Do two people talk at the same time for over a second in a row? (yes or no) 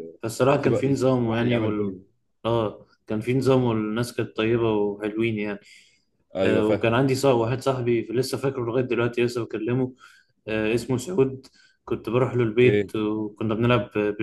yes